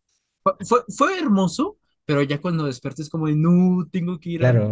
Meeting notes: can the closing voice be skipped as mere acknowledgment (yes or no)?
no